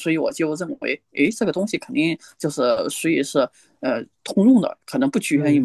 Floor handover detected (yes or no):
no